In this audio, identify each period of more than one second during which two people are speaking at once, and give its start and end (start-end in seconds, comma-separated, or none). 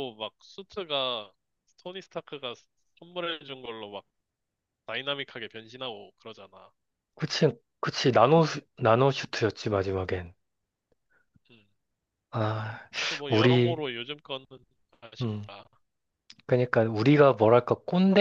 none